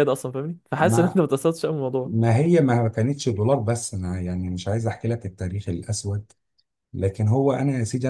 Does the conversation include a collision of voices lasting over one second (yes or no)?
no